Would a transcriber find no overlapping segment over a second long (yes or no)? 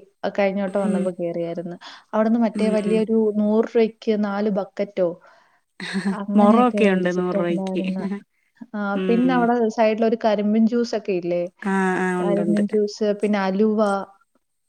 no